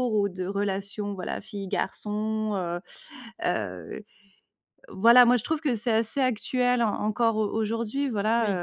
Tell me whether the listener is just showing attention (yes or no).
yes